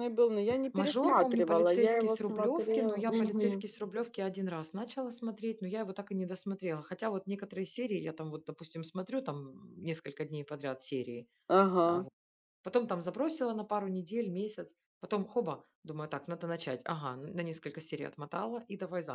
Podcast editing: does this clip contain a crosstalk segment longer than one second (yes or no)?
yes